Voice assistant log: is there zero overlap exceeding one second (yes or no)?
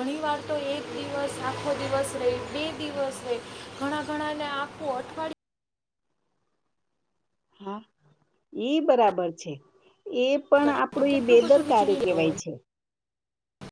no